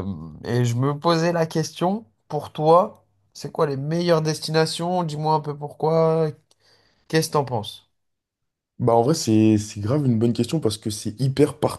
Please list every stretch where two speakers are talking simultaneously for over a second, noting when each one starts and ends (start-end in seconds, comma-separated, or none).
none